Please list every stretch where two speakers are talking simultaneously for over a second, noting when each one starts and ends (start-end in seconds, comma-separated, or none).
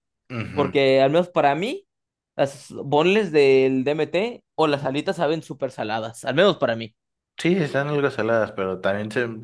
none